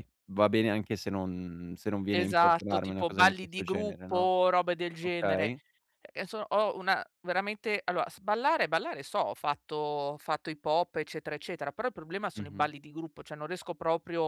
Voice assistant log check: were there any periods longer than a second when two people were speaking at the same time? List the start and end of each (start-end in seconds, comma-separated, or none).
2.1-4.3